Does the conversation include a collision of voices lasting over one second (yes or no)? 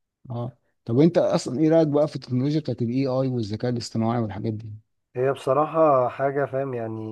no